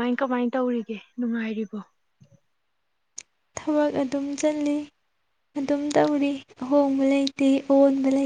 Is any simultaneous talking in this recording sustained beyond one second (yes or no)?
no